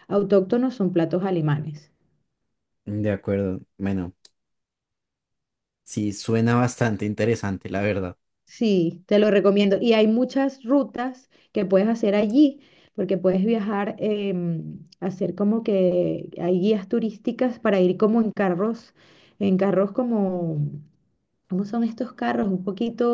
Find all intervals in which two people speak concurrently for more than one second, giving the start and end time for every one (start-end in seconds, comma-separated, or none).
none